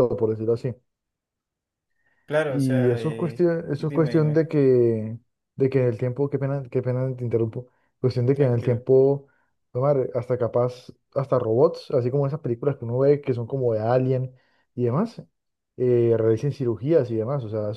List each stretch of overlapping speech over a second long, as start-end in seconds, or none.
2.5-4.4